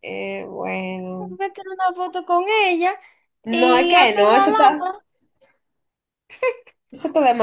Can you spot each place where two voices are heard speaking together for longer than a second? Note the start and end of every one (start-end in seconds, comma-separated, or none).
3.5-4.8